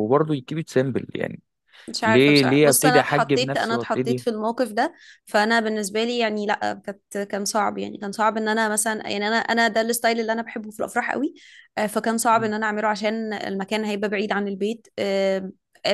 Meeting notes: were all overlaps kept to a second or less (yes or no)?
no